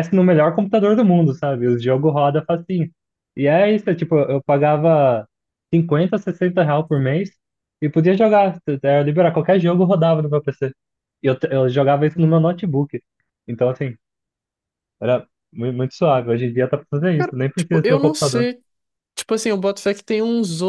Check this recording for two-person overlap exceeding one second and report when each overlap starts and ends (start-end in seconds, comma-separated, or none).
17.2-18.5